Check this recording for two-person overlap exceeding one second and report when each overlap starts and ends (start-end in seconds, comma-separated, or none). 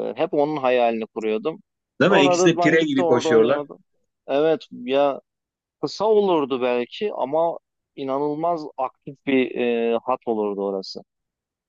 2.0-3.6